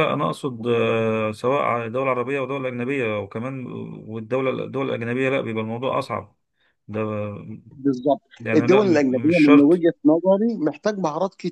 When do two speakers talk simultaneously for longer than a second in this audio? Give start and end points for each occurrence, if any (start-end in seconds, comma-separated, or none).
8.4-9.8